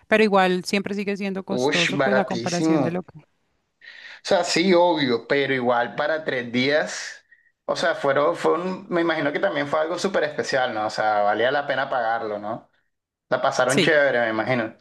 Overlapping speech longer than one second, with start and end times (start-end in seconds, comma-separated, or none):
1.6-3.0